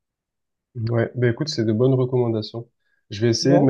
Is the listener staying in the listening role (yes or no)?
yes